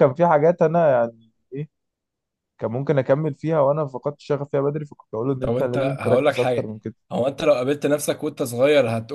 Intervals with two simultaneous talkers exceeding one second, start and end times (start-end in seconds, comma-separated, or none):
5.4-6.7